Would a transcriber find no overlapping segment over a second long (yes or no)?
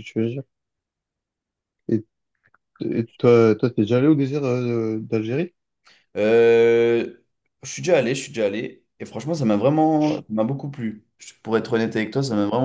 yes